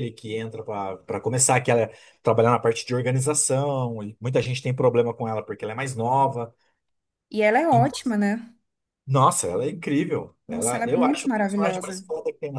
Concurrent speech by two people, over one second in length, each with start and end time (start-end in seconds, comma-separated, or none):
10.5-12.0